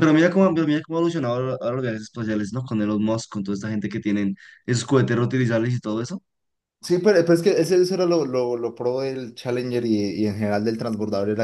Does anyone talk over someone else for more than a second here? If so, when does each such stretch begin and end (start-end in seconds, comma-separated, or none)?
none